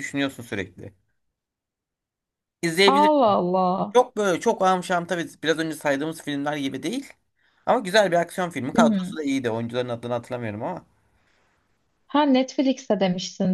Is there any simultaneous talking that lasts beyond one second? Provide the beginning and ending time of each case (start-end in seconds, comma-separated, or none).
none